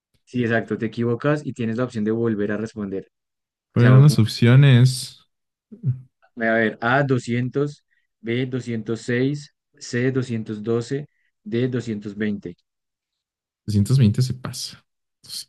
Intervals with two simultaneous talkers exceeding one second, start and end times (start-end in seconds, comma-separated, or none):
none